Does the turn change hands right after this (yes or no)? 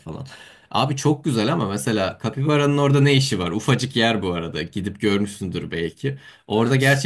no